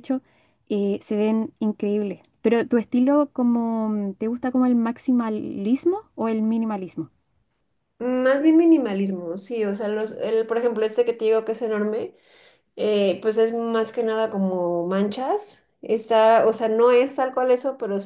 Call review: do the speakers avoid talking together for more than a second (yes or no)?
yes